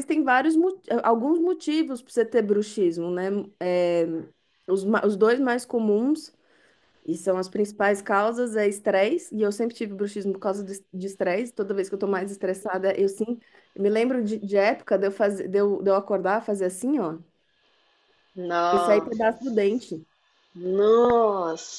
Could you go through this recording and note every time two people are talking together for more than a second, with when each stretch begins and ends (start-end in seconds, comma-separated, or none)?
none